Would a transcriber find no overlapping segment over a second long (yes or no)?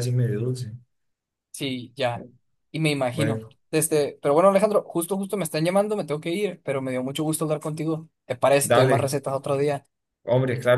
yes